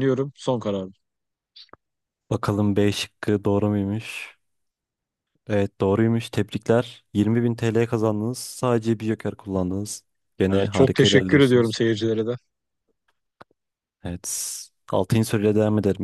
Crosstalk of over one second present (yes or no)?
yes